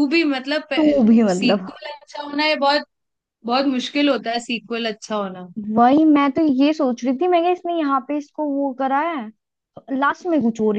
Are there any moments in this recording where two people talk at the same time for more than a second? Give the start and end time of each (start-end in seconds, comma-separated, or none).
none